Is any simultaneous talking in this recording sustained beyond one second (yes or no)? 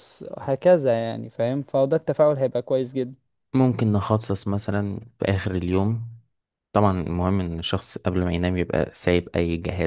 no